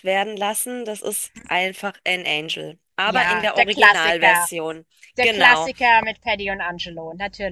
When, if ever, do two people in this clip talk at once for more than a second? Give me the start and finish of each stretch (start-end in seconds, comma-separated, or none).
3.0-4.5